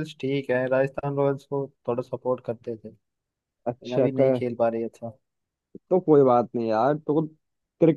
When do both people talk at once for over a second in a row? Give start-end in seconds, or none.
none